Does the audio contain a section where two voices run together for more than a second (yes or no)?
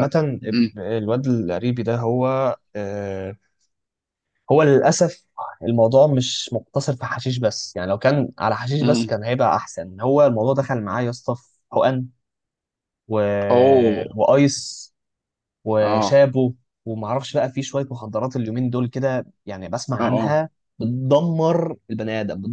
no